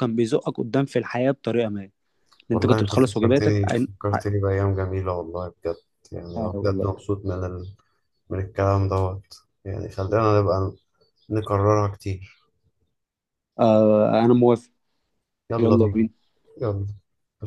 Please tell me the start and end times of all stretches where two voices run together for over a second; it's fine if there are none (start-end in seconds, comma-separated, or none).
2.5-4.3